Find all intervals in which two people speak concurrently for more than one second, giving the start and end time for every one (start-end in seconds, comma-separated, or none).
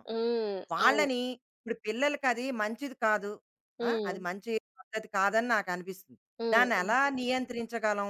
none